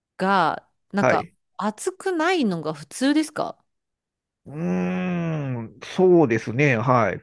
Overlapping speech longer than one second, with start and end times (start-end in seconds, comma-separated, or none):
none